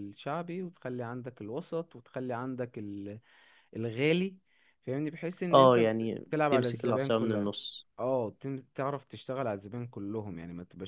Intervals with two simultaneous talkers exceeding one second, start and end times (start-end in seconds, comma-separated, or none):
5.5-7.5